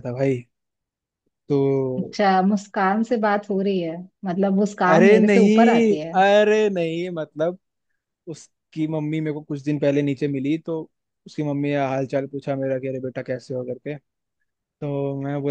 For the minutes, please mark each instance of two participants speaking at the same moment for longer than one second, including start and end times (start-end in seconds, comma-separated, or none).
4.9-6.1